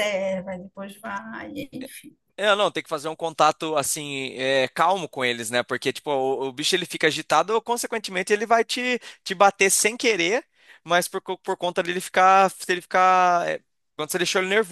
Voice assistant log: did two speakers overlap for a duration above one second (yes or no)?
no